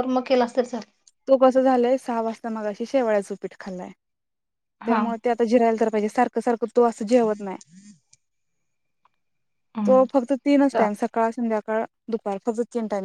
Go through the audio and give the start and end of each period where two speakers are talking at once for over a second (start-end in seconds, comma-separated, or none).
none